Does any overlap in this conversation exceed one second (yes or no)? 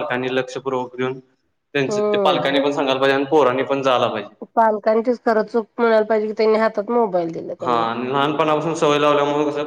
no